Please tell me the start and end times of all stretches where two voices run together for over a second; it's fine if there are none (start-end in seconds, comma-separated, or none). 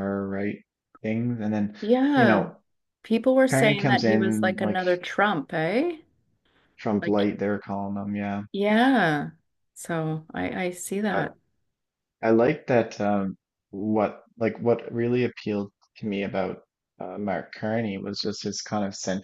3.5-4.8